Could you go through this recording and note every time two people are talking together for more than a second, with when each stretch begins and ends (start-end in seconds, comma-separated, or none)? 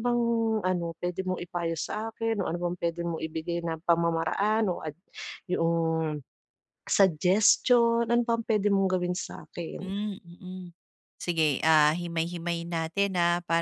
none